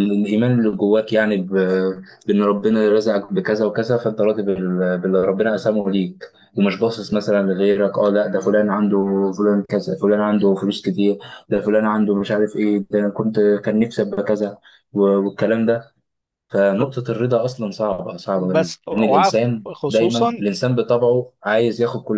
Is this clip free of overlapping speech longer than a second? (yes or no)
no